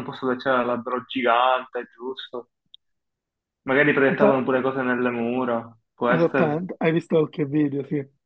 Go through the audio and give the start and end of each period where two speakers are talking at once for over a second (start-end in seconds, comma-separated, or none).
none